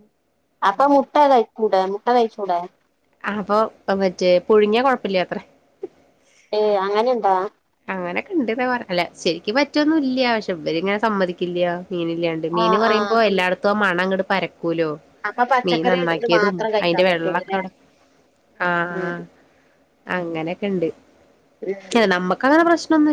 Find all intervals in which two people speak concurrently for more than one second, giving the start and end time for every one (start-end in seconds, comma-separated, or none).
15.7-17.6